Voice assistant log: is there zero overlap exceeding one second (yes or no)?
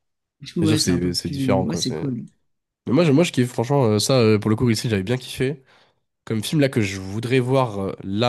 no